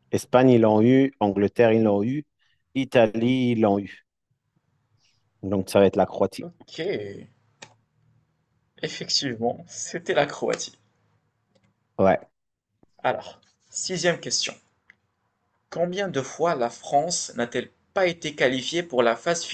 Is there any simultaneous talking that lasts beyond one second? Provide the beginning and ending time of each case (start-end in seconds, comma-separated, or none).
none